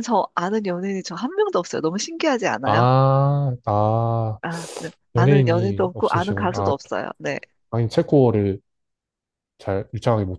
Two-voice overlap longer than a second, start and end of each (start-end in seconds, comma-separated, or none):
5.1-6.7